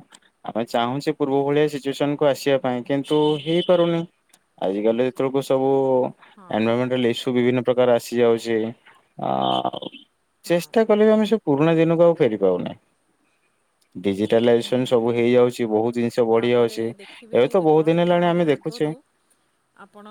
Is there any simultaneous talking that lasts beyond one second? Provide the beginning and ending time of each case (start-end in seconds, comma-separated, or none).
16.4-18.9